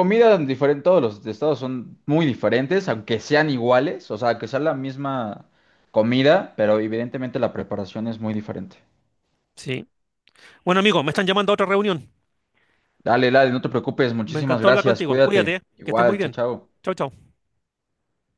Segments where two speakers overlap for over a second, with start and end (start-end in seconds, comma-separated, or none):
14.2-16.4